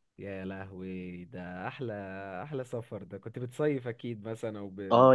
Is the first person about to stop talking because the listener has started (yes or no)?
yes